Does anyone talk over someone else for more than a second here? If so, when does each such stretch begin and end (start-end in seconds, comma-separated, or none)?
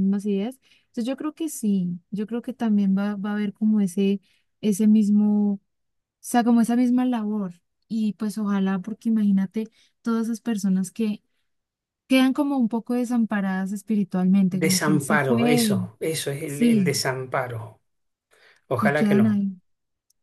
14.5-15.8